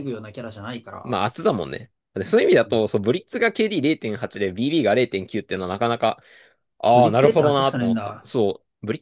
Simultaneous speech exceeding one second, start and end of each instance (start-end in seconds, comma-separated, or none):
6.9-8.3